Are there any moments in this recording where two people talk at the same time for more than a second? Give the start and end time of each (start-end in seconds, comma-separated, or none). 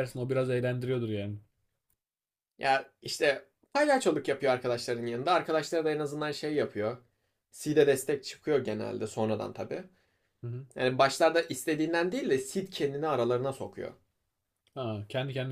none